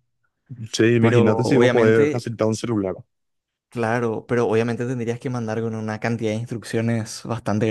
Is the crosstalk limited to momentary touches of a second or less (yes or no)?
no